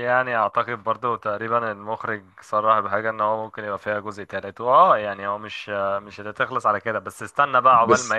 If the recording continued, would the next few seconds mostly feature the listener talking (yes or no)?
no